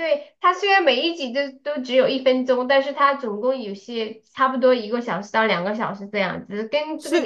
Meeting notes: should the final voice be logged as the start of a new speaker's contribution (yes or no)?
yes